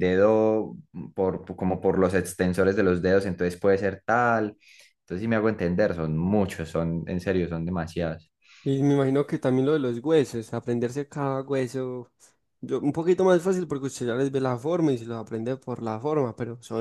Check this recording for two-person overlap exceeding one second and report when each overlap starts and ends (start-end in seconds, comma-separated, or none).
none